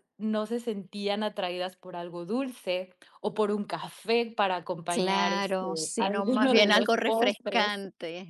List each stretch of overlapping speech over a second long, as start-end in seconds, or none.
4.9-7.7